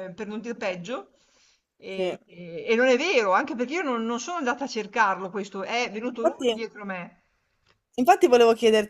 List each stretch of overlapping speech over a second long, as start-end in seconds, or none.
none